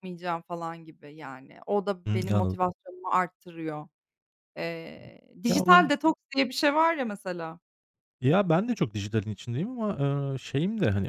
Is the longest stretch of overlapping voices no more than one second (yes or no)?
yes